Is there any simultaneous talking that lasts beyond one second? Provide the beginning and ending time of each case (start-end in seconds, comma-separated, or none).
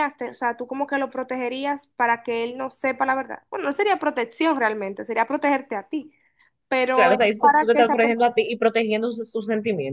6.9-8.3